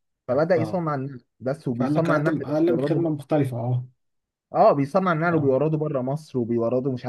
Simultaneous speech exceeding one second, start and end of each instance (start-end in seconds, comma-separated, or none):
1.7-3.1